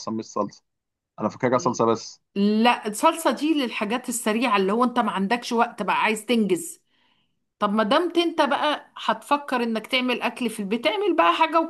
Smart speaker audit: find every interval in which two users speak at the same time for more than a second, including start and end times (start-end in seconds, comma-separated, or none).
none